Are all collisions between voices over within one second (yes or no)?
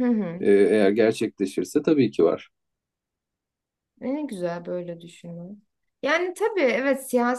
yes